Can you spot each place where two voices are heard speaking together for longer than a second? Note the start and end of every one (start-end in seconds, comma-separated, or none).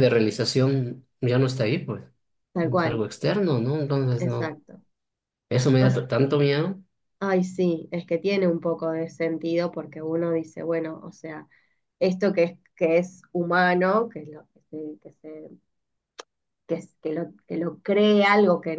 none